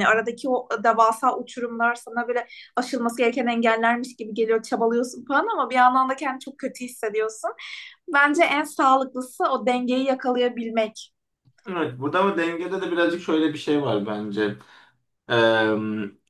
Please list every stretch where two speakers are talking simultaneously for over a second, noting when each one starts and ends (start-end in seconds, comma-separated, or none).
none